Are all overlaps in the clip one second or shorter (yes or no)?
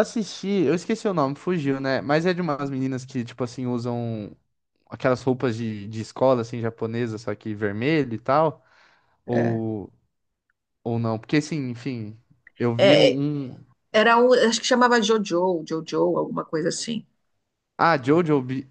yes